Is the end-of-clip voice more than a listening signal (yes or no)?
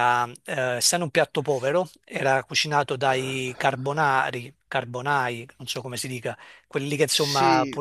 no